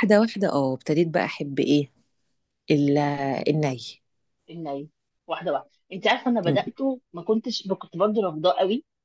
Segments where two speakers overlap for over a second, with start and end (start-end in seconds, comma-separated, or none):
none